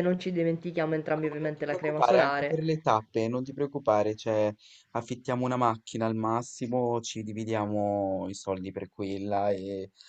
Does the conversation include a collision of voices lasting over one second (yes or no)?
yes